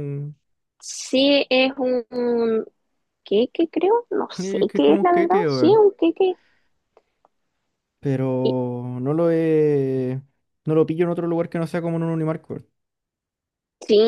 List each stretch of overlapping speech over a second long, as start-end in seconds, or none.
4.4-5.8